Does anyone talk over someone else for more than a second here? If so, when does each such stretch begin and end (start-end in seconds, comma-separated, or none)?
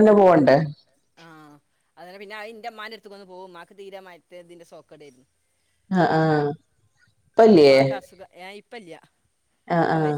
none